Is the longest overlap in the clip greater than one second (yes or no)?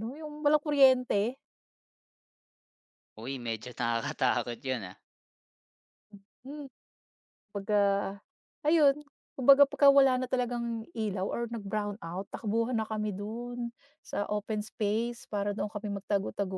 no